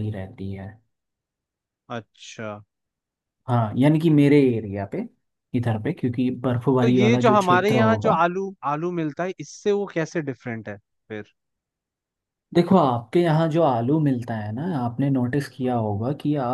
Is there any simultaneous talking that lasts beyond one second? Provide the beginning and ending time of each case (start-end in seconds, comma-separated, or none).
6.8-8.1